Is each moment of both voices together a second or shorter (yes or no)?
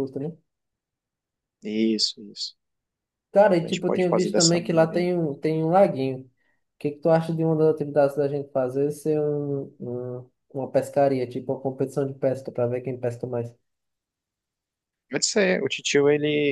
no